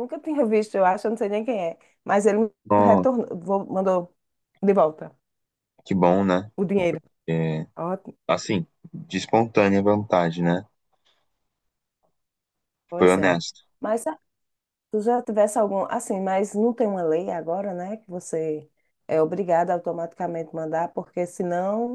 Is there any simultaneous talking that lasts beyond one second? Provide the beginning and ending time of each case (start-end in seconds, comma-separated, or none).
none